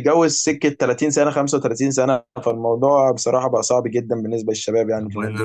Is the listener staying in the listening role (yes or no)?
no